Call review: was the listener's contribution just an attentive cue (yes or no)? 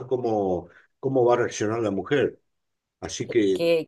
no